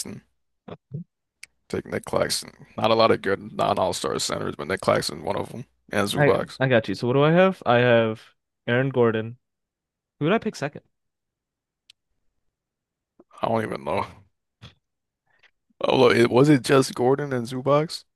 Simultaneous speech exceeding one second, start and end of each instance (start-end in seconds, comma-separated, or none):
none